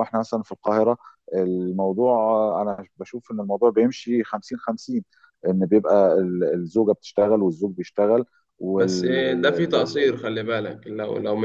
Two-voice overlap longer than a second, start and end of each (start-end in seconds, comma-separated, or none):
8.7-10.2